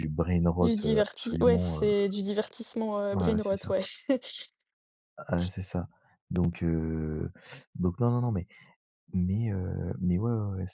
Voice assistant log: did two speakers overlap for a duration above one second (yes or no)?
yes